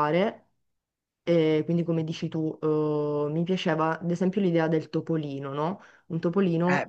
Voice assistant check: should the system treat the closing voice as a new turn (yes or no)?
yes